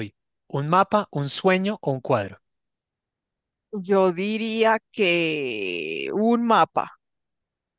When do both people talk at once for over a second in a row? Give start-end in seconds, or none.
none